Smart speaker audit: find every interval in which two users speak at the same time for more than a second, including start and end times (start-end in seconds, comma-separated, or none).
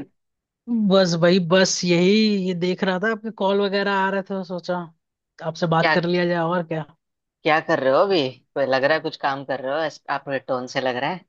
none